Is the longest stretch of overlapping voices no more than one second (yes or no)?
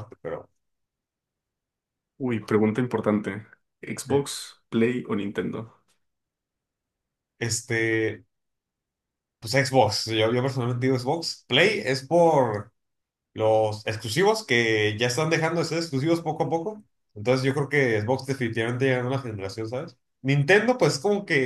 yes